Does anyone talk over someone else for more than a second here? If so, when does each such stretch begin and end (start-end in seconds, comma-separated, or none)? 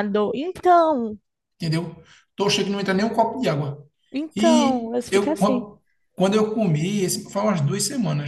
4.3-5.7